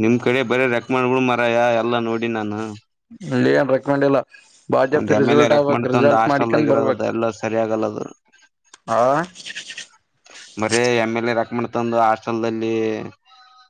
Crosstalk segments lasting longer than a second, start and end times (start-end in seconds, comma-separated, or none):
5.0-7.1